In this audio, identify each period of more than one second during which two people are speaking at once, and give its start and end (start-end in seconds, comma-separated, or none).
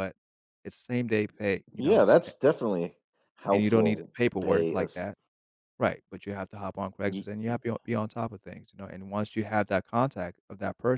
3.5-5.1